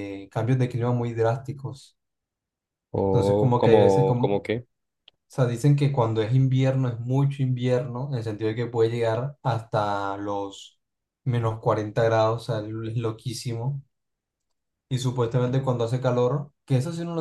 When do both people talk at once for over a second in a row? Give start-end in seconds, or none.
3.1-4.4